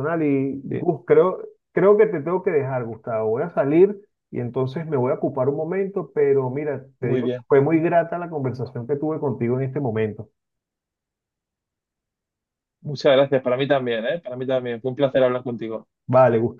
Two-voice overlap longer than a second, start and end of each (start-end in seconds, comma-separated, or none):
none